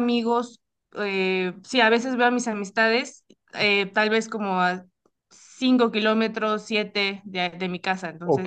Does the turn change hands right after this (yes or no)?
yes